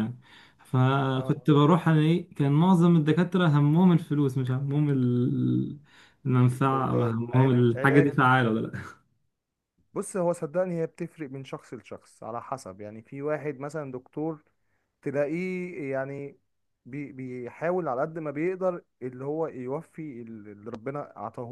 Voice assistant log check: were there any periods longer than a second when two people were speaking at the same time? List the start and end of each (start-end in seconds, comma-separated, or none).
6.7-8.1